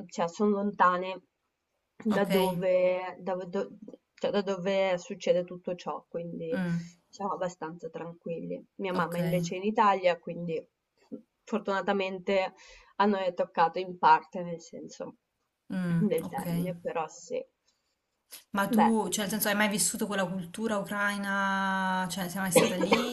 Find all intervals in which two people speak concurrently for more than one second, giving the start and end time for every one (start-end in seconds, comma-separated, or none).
none